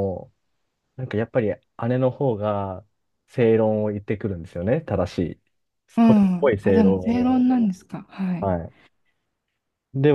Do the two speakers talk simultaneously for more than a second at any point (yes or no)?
yes